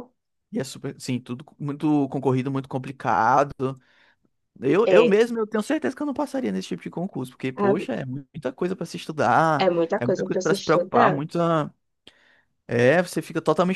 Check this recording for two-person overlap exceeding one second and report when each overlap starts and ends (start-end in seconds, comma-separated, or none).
9.6-11.2